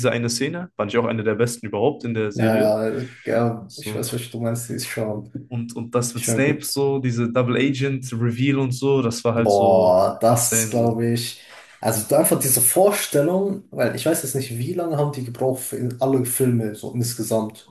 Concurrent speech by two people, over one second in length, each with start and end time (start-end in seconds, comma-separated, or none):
9.3-11.0